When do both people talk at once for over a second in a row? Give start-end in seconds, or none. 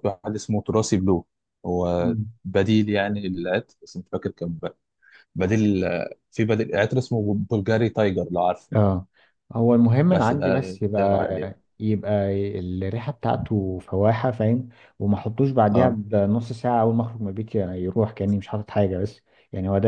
10.1-11.6